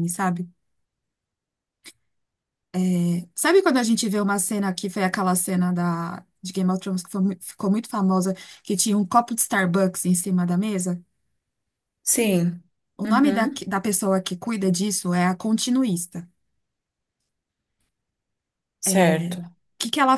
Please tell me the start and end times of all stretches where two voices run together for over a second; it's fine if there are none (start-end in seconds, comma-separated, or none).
none